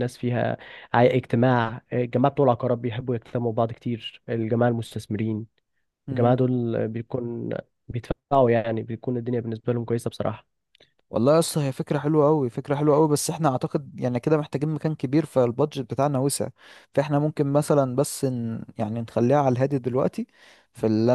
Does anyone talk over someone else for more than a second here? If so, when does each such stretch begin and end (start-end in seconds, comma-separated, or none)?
none